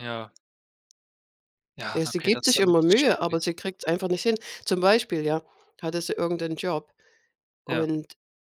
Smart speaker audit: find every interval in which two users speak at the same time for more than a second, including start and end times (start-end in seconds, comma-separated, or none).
1.9-3.5